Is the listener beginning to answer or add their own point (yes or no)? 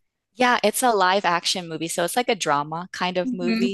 yes